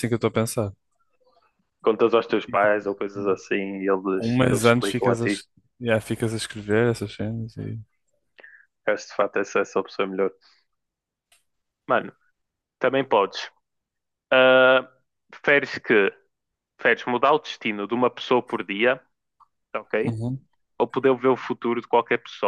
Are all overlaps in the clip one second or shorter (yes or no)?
no